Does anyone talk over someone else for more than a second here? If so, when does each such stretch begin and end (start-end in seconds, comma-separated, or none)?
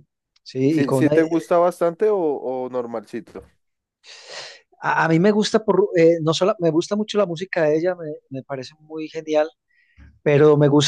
none